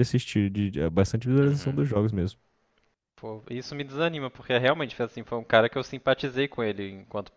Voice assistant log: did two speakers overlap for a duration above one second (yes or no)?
no